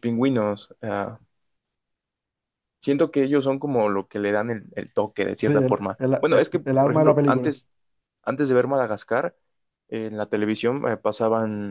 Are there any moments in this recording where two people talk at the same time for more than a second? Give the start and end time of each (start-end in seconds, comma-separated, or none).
5.4-7.5